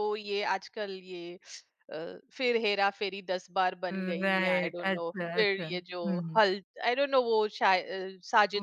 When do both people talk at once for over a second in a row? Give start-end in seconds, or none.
3.9-5.7